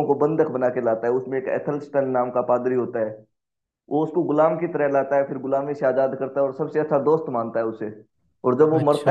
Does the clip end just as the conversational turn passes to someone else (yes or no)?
no